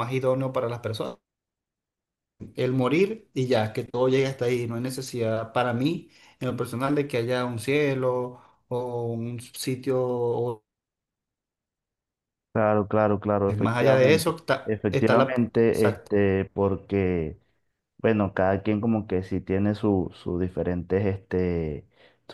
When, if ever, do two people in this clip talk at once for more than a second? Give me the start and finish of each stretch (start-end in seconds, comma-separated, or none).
13.6-16.1